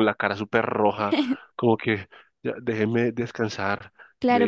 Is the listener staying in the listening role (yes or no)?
no